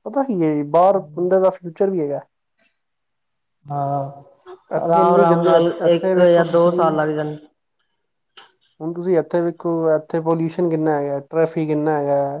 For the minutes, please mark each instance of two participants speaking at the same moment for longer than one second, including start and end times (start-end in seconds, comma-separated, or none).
4.8-6.8